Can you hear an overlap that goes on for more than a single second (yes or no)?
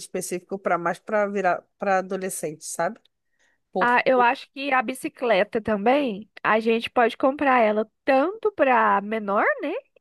no